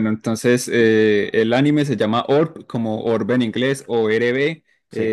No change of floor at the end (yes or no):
yes